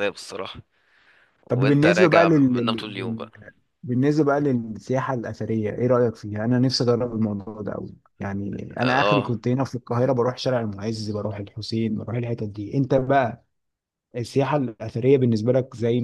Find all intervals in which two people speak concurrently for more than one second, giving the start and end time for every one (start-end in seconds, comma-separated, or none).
1.5-3.3